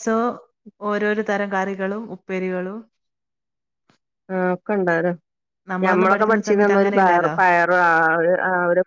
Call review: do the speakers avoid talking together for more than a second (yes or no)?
no